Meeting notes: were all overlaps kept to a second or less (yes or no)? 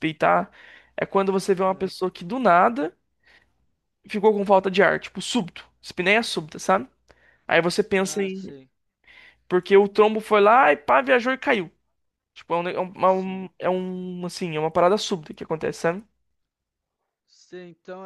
yes